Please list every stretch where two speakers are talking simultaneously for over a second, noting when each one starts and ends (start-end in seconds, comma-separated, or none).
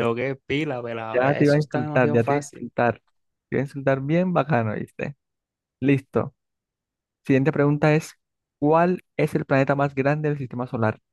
1.1-2.7